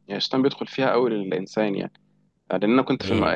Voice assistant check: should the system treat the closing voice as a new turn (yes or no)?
no